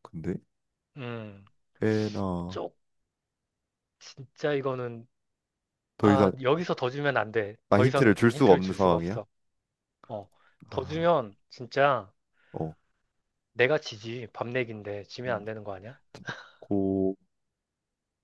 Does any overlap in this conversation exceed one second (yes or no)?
yes